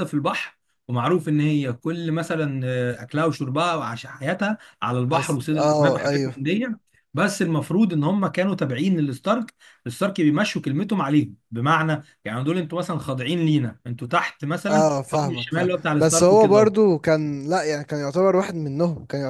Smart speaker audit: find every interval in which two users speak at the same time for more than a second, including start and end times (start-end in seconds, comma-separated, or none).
5.1-6.3, 14.7-16.7